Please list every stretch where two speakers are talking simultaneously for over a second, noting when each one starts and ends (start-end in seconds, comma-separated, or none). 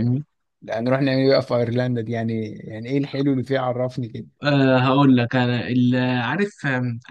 none